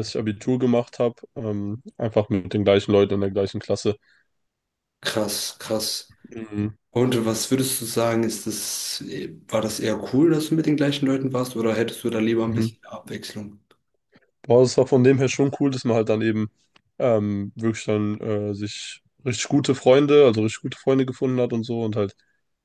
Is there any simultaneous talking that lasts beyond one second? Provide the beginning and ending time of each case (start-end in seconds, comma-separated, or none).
none